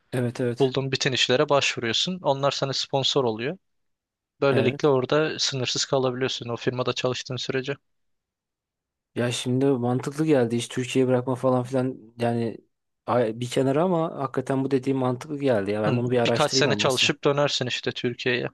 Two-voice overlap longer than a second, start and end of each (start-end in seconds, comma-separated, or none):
15.9-17.1